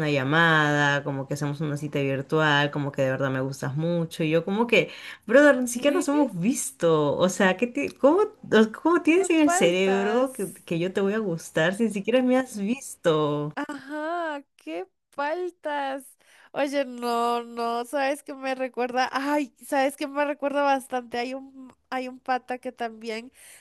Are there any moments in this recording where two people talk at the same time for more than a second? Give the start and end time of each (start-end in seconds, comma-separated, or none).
9.1-10.7